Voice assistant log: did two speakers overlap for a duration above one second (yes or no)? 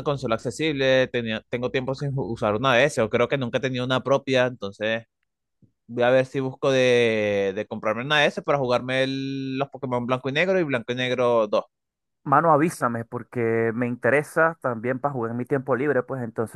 no